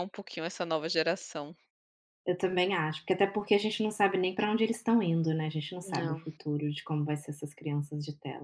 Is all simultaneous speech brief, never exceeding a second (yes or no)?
yes